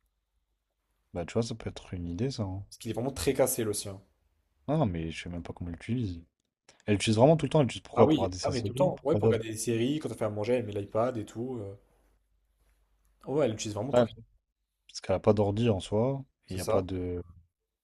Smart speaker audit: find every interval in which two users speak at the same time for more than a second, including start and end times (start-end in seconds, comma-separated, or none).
8.0-9.4